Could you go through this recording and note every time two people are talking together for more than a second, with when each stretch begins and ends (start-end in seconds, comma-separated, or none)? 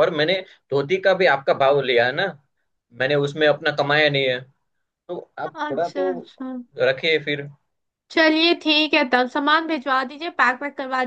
none